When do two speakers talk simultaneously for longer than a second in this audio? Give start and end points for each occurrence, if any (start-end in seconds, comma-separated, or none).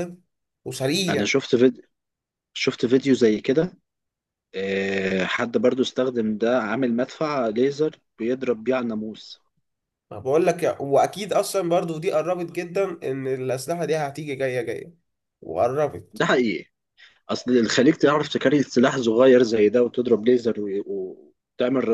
none